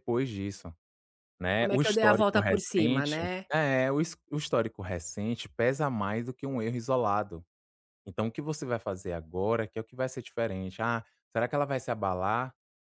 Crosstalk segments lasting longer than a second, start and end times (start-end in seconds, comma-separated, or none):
1.6-3.3